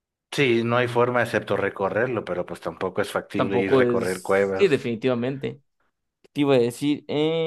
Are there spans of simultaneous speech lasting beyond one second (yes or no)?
yes